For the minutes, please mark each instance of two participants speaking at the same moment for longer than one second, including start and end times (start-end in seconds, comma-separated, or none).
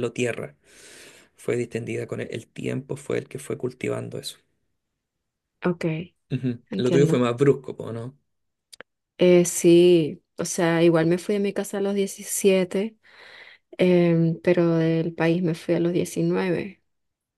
none